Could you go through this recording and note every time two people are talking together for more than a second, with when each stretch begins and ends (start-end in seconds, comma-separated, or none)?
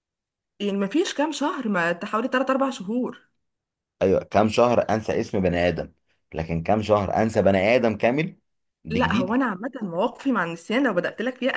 none